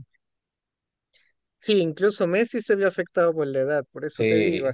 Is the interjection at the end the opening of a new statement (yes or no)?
yes